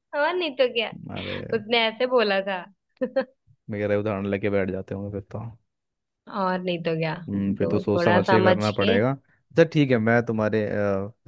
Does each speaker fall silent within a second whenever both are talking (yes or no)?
no